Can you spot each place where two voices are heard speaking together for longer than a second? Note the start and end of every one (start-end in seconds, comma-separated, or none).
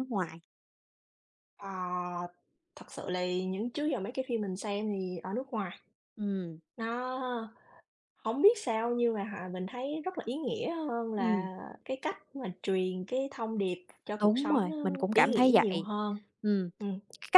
14.2-15.9